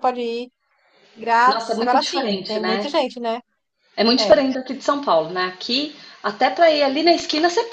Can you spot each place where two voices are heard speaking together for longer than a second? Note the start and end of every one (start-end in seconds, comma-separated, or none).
1.5-2.9